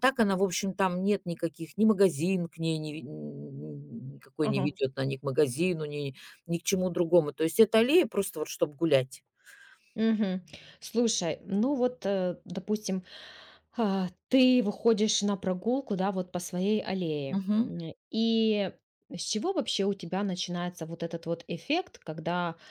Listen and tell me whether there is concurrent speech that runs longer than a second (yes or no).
no